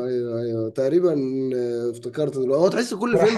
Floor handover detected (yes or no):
yes